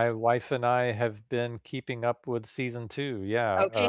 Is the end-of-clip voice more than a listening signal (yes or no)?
yes